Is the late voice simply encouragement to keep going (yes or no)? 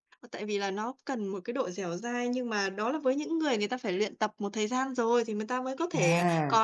yes